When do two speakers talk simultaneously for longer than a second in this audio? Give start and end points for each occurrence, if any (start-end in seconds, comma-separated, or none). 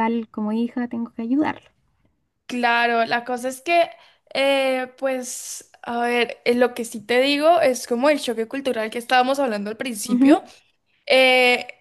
none